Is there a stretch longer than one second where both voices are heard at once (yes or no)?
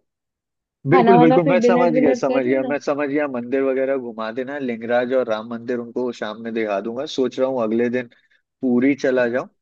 yes